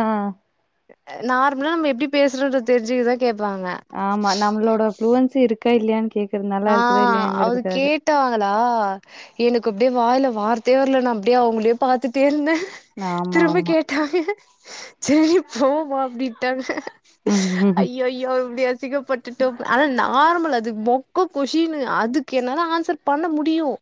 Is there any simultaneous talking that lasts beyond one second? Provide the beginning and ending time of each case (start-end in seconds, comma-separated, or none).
none